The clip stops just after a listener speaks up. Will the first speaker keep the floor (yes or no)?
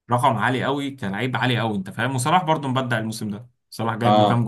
yes